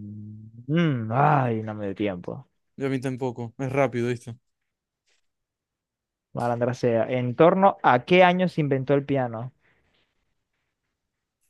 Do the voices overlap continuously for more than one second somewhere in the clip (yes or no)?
no